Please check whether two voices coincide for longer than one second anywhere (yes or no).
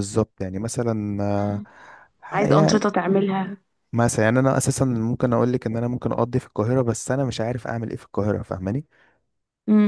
no